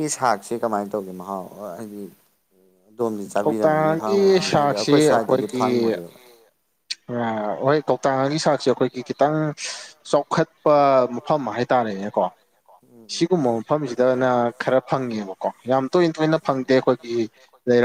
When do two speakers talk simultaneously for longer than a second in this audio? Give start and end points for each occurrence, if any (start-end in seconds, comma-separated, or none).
3.4-5.0